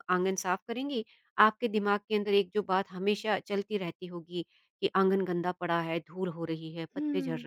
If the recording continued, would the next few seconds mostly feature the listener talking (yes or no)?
no